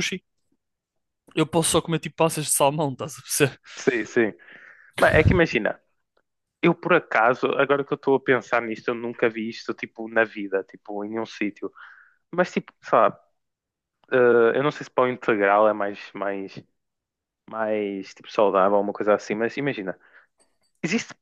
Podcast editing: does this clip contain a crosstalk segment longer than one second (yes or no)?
no